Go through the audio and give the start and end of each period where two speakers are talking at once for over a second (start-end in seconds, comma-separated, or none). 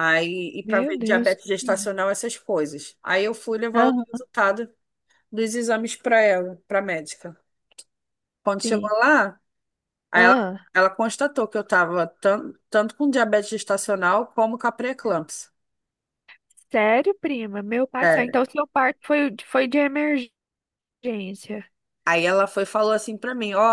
0.6-1.9